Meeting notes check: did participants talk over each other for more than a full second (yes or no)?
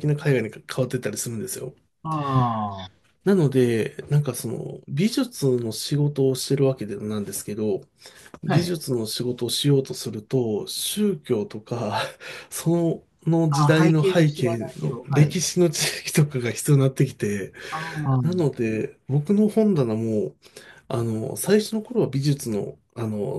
yes